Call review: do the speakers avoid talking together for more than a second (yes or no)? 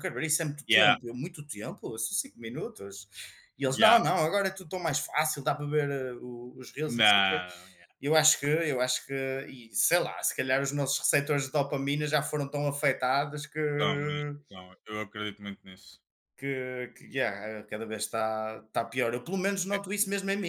yes